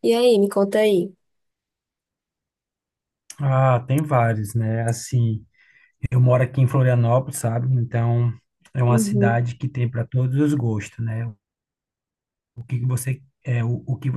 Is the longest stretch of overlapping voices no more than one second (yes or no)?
yes